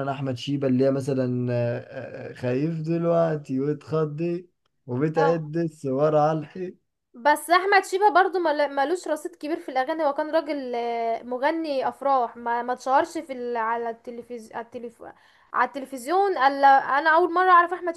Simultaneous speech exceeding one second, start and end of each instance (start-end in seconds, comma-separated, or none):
none